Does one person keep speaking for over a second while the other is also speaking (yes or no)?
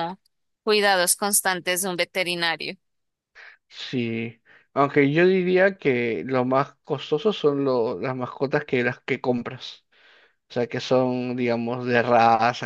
no